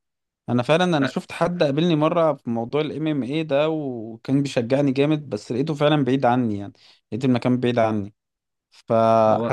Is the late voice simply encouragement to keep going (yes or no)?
yes